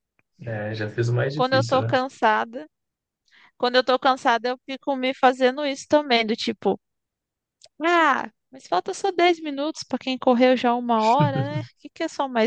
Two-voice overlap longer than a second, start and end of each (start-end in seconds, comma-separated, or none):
none